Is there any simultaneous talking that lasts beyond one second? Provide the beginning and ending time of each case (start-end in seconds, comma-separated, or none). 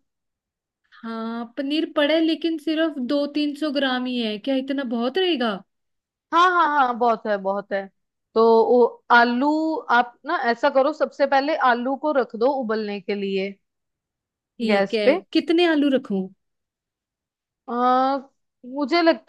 none